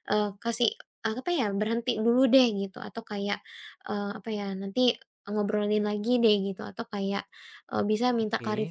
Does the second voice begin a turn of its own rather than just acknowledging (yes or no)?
no